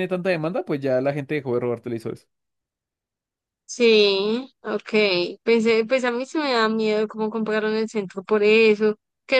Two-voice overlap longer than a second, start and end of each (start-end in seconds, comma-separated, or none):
none